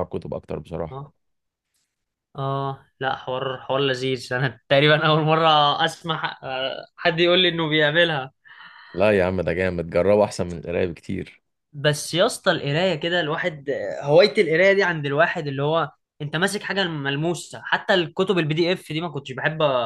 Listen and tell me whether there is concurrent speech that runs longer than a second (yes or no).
no